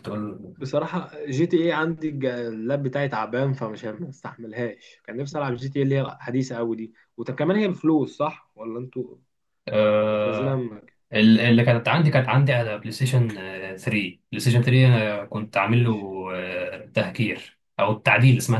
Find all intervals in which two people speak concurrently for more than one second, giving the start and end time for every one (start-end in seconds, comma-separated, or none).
none